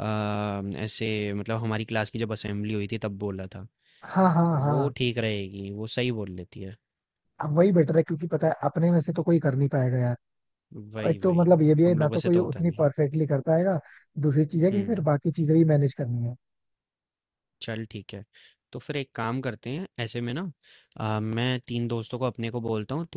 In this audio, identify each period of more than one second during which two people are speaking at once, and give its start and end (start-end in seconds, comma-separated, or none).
11.0-12.9